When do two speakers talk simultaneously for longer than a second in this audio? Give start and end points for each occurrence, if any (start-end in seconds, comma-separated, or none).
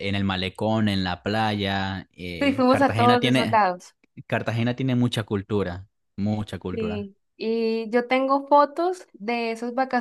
2.4-3.6